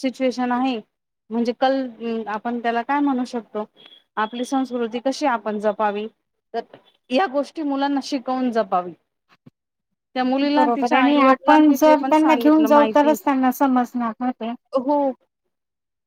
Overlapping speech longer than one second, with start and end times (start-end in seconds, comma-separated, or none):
10.6-13.1